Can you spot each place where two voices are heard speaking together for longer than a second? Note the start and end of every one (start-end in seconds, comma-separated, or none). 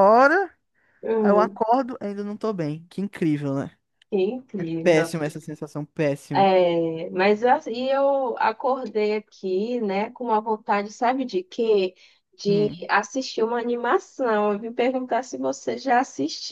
none